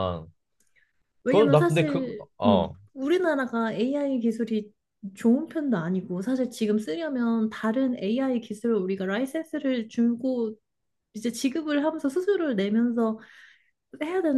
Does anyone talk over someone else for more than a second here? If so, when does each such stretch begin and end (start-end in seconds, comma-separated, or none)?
1.3-2.7